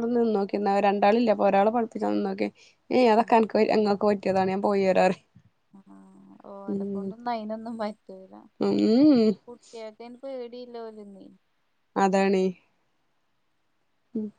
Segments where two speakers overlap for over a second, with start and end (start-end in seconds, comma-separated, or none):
none